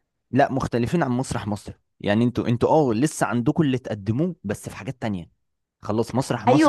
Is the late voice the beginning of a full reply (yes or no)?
yes